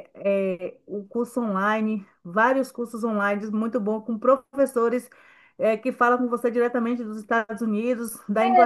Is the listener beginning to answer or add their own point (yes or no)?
yes